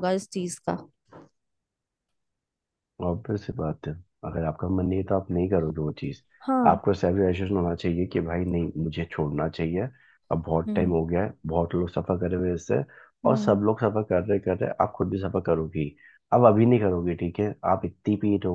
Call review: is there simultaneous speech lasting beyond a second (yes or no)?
no